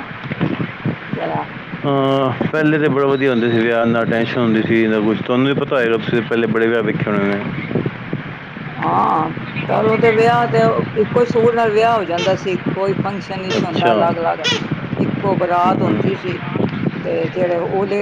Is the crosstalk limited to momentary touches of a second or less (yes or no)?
yes